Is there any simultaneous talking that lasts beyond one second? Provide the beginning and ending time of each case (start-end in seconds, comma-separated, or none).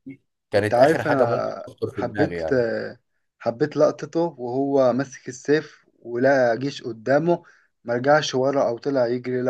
0.6-2.4